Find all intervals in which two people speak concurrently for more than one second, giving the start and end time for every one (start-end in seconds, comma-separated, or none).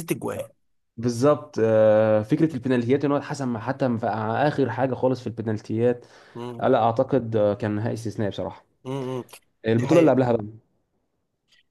none